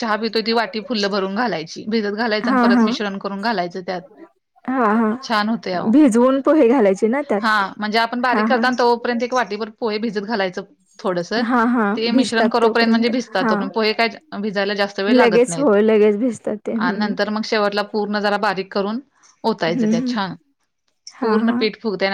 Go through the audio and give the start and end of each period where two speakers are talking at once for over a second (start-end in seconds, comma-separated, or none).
11.9-13.6